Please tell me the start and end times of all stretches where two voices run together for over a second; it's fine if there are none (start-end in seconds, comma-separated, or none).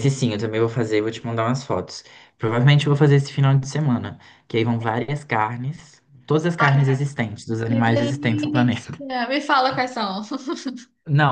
7.7-9.0